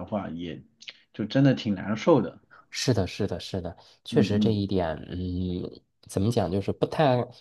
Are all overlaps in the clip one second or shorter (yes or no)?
yes